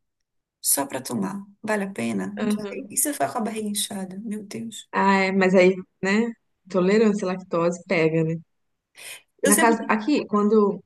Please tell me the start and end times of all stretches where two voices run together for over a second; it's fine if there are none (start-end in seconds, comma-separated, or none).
none